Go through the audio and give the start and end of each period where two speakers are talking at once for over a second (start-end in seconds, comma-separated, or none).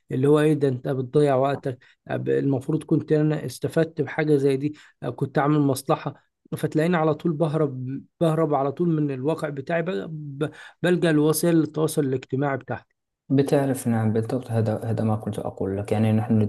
none